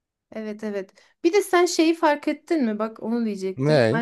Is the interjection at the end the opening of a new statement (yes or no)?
no